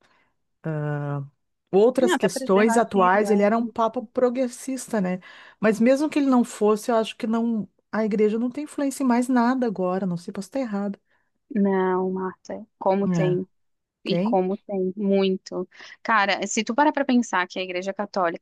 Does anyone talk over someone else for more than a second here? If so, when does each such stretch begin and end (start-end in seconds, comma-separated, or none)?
2.0-3.4